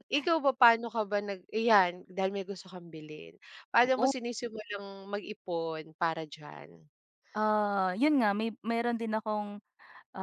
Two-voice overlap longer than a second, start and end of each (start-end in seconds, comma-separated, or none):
none